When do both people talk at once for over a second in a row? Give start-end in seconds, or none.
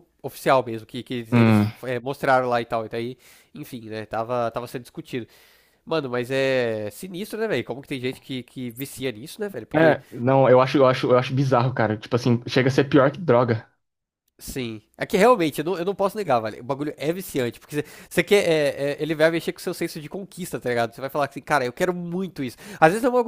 none